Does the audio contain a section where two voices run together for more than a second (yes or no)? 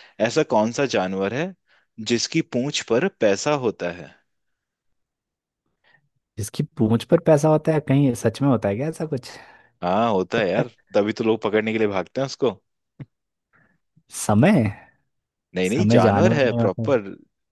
yes